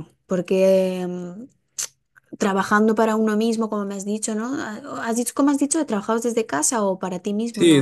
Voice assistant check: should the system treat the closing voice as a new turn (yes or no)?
yes